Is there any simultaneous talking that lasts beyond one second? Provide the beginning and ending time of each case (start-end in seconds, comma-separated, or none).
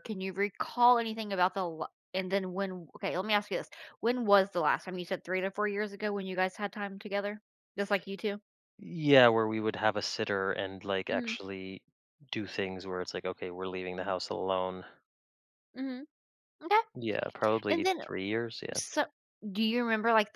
none